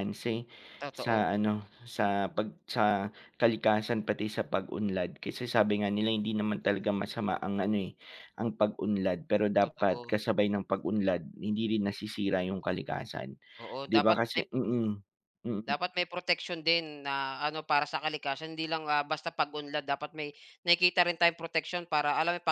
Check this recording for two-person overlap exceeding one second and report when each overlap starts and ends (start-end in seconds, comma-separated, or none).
none